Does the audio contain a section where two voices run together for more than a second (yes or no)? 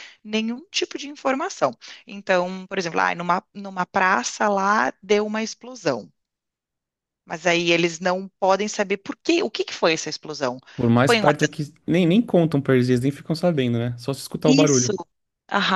no